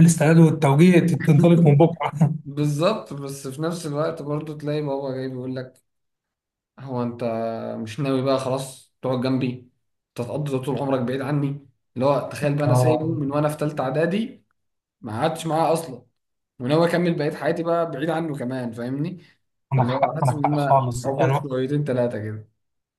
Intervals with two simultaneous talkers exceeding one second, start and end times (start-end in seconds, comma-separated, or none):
19.7-21.4